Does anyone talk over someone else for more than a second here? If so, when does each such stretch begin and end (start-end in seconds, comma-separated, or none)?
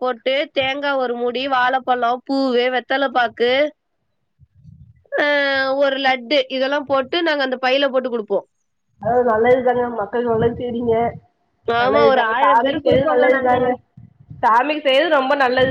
11.8-13.5